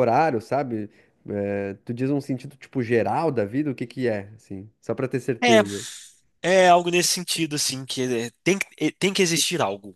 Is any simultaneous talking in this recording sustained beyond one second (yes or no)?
no